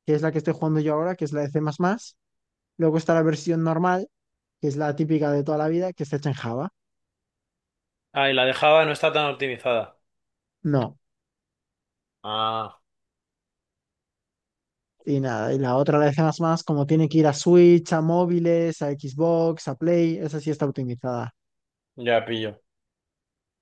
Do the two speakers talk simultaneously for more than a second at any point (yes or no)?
no